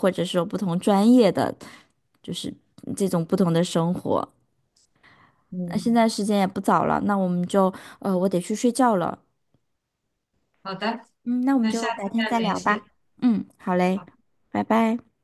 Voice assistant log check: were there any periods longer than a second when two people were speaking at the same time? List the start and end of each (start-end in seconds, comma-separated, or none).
11.6-12.8